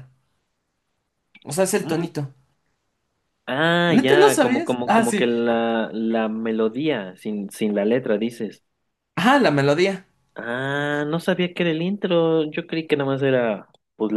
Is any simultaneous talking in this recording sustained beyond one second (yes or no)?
yes